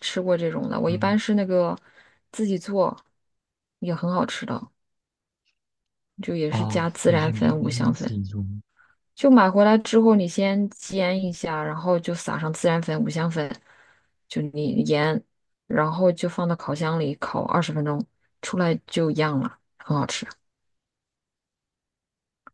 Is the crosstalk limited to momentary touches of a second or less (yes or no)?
no